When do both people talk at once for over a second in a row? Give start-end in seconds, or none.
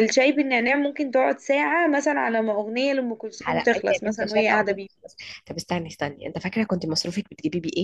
3.4-4.9